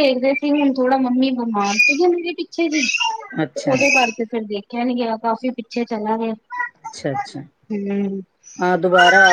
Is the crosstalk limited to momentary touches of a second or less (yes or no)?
yes